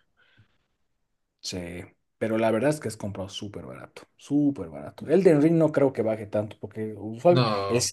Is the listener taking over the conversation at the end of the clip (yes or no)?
no